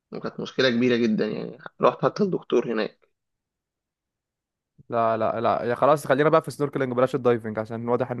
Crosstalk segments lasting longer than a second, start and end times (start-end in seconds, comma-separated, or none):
none